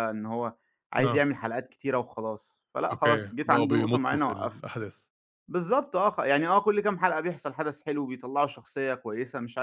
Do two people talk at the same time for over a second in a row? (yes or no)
yes